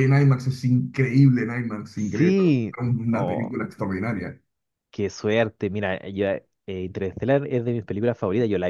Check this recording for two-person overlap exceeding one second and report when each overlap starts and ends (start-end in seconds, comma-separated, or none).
1.9-3.5